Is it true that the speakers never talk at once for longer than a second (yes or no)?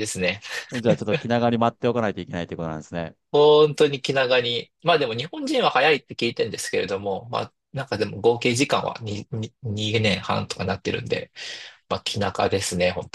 yes